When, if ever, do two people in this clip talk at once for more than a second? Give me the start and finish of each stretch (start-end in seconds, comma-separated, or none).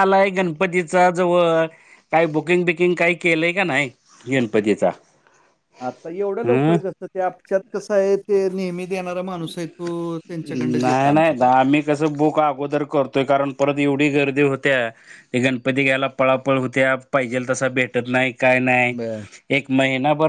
none